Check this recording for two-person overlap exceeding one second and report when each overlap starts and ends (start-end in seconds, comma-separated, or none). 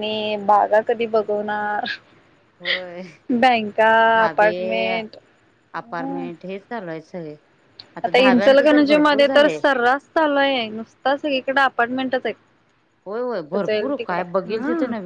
8.2-9.6